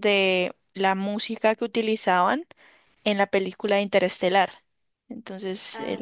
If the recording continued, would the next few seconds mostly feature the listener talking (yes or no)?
no